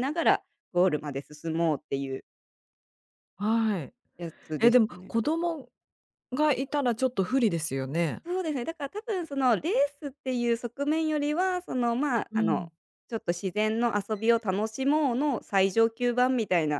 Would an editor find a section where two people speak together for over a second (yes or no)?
no